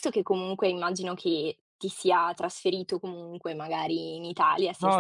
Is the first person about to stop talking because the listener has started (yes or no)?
yes